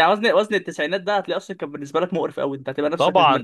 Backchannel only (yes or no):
no